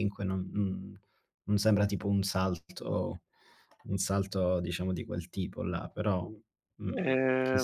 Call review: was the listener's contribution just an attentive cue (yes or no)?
no